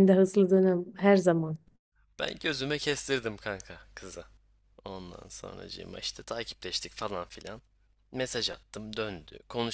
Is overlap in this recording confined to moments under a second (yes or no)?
yes